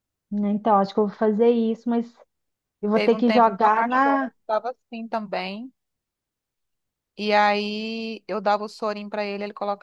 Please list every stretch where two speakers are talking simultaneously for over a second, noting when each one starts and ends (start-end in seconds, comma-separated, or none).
2.9-4.3